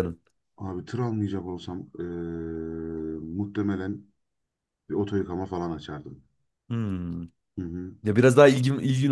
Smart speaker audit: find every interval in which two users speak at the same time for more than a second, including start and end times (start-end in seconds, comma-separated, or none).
none